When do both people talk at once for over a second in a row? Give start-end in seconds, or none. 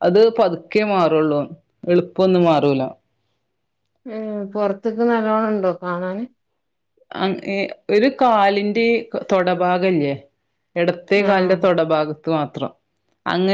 none